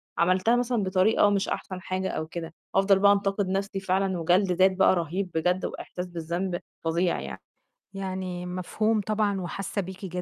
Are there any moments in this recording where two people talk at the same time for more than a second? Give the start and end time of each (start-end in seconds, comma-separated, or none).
none